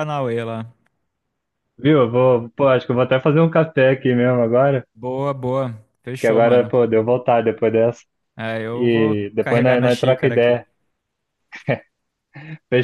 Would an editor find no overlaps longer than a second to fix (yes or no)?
no